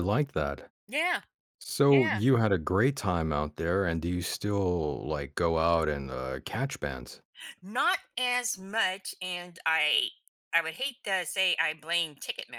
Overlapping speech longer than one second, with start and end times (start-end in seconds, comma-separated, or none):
none